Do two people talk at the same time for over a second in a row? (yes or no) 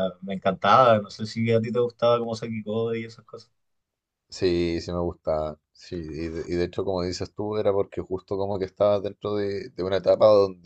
no